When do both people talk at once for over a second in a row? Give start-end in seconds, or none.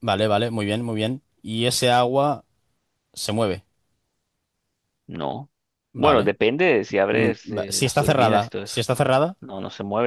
7.1-8.8